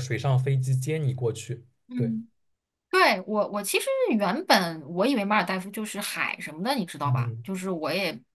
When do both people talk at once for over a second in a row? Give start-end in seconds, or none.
none